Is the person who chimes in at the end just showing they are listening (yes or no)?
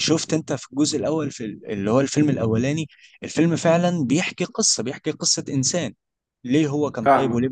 yes